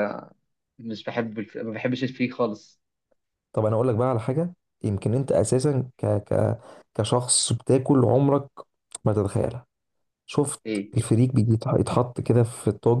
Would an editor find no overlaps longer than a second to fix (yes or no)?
yes